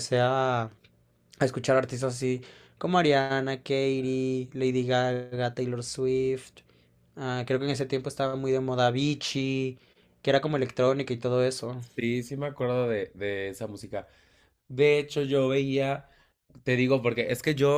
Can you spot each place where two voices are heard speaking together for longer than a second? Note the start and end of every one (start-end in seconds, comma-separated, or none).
none